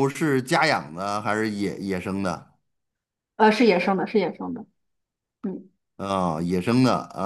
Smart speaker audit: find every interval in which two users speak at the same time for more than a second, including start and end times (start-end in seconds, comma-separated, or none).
none